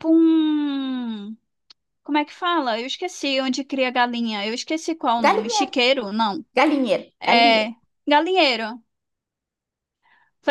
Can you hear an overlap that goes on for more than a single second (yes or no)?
no